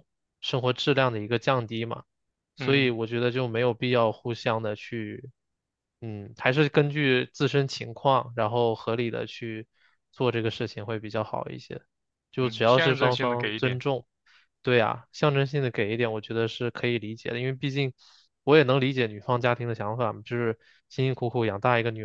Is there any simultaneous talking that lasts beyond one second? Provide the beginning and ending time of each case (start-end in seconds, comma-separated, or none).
12.4-13.8